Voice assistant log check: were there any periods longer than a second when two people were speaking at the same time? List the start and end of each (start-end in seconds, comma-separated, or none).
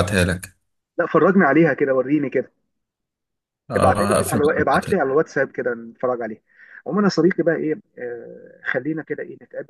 3.8-5.1